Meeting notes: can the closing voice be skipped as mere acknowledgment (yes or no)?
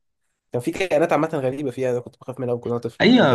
no